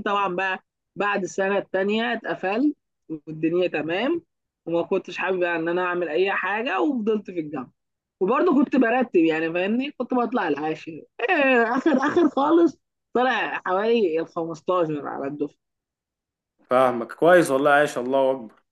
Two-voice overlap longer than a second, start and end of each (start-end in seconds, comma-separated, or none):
none